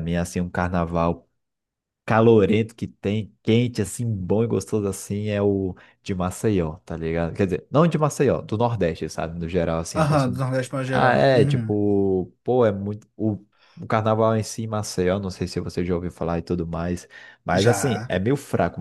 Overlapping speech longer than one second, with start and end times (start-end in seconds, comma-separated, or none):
10.0-11.7